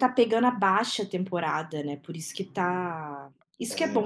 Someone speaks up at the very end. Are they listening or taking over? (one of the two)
listening